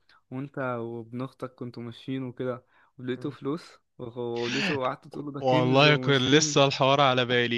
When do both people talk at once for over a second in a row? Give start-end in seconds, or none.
5.4-6.6